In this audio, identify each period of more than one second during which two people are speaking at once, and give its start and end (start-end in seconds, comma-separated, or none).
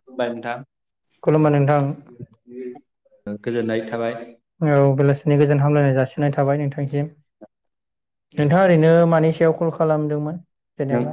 none